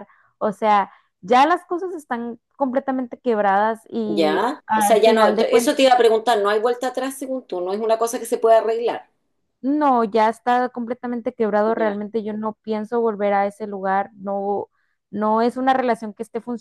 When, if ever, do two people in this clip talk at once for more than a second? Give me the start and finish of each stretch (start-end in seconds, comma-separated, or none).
4.1-5.8